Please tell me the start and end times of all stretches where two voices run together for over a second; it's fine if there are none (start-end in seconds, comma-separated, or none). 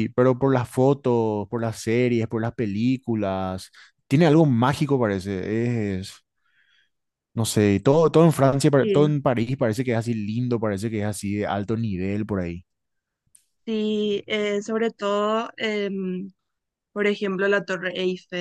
none